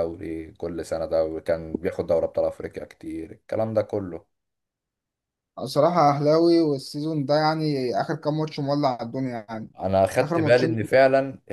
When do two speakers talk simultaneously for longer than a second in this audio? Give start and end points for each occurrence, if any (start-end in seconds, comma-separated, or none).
none